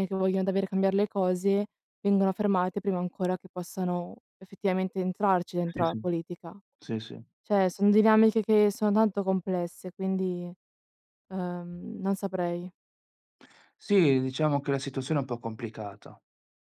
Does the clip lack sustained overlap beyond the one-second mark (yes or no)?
yes